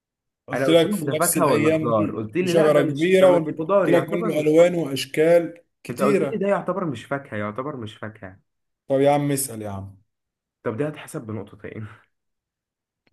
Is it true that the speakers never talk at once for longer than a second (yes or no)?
no